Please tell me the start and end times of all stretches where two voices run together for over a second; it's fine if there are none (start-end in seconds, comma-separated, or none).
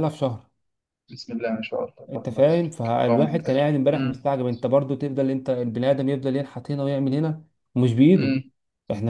2.1-4.2